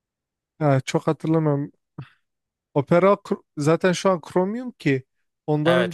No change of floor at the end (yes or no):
no